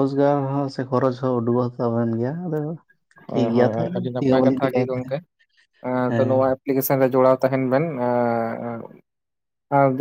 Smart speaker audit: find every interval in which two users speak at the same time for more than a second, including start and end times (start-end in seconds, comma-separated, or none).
3.3-5.1